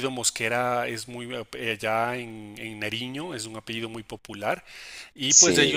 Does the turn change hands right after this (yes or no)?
no